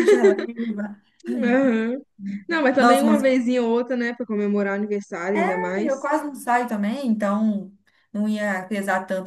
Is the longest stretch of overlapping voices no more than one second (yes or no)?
yes